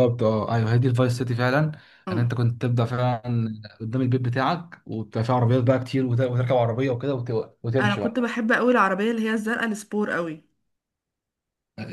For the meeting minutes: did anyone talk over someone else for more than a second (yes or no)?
no